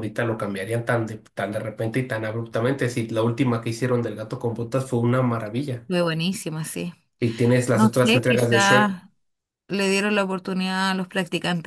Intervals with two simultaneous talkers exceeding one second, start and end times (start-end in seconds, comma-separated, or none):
7.7-9.0